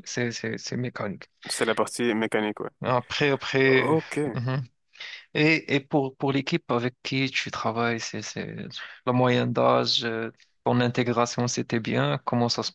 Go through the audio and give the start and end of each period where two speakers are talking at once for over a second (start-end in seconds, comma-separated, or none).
none